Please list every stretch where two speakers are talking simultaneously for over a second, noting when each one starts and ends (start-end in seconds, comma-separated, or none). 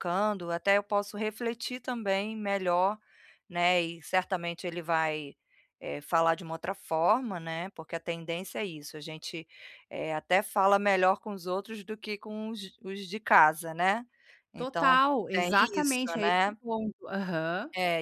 14.6-16.5